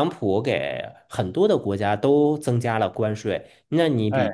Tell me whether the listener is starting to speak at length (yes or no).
no